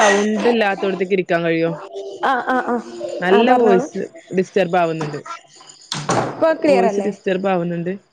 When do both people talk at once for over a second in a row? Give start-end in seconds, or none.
none